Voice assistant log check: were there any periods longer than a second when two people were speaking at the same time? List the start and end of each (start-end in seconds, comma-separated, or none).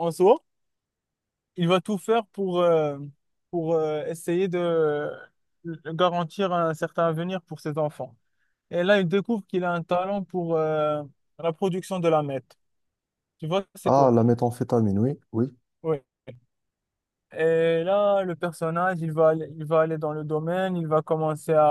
none